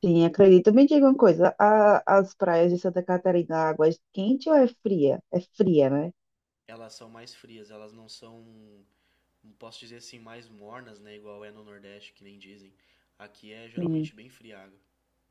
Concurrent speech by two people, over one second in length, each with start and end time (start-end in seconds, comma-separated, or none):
none